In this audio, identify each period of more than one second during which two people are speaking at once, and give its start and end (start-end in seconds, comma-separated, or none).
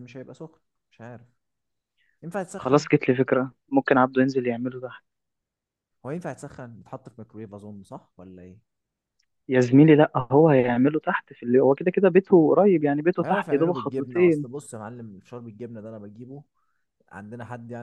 13.2-14.5